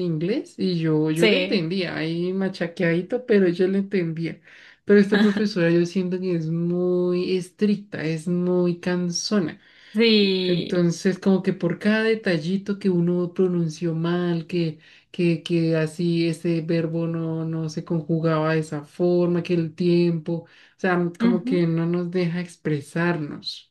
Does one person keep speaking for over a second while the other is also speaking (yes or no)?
no